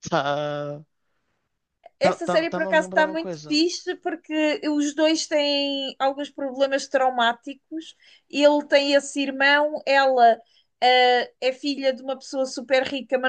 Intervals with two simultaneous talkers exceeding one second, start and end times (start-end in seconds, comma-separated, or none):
2.0-3.6